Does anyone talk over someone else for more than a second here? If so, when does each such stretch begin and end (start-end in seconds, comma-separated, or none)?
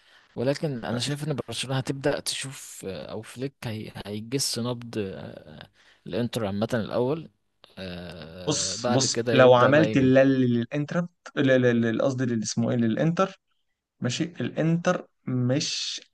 8.5-10.3